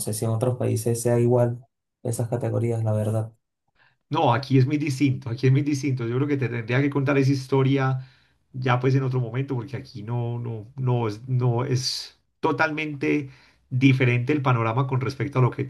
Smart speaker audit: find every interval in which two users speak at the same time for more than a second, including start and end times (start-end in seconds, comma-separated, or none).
none